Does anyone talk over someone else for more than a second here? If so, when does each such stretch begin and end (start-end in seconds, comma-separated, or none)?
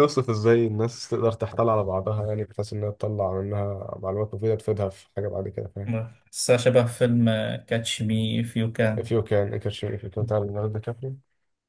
none